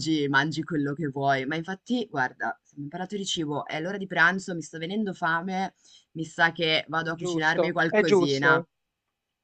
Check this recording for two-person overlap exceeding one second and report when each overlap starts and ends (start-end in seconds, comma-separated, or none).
7.1-8.7